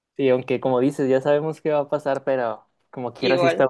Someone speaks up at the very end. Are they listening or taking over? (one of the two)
listening